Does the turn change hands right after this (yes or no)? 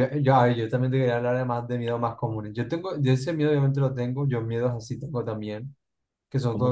no